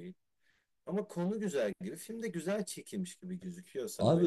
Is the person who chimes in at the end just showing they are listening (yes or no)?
no